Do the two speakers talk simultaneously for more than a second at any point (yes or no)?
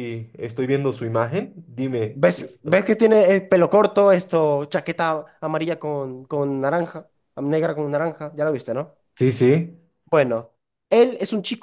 no